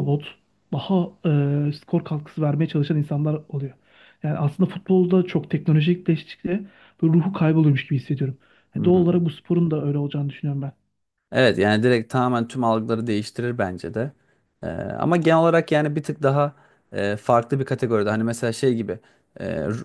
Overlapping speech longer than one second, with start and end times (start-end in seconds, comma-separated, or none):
none